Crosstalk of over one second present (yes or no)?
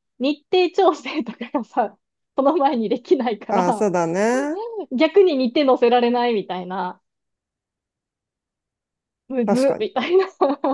no